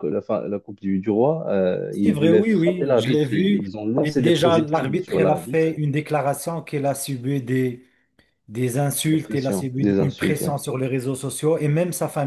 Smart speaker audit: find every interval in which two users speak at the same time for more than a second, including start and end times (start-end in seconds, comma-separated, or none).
1.9-5.8, 9.0-10.6